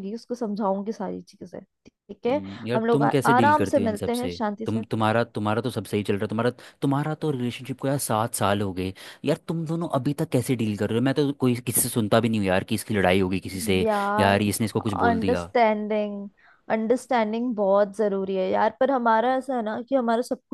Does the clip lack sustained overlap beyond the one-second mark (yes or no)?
no